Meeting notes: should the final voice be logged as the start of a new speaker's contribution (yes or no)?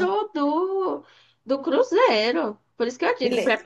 no